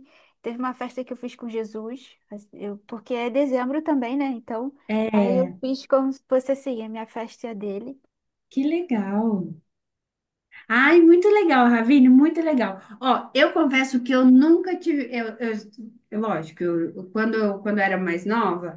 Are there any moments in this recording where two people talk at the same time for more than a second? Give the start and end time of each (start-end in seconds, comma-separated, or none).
none